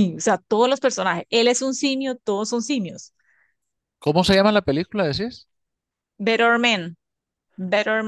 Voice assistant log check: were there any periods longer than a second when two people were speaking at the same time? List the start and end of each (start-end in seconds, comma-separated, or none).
none